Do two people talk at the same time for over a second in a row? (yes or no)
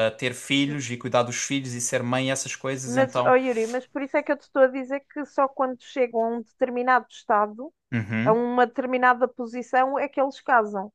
no